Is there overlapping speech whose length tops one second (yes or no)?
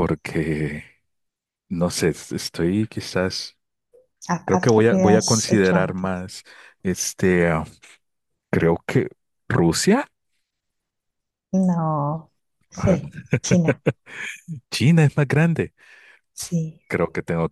yes